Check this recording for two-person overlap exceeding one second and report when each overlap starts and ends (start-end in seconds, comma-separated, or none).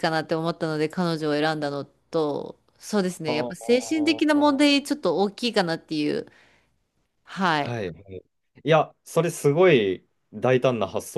3.2-4.8